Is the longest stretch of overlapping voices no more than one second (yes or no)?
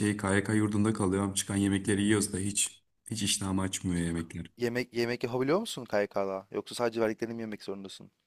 yes